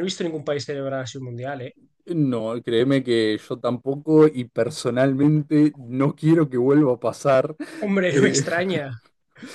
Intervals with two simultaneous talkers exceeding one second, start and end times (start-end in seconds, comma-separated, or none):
none